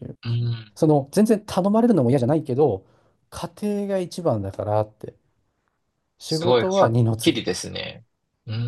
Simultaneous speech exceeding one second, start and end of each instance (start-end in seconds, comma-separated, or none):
6.2-7.7